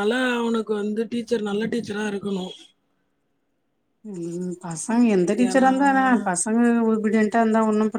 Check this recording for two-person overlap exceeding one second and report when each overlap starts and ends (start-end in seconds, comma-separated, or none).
none